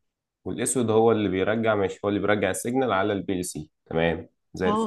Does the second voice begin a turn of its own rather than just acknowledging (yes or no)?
yes